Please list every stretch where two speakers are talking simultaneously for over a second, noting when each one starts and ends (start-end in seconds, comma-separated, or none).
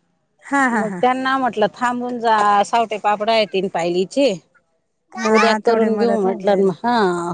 5.3-6.7